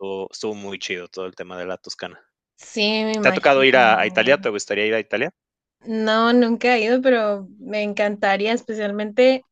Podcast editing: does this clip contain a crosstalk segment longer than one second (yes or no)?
yes